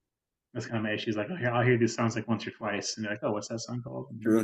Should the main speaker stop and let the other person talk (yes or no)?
yes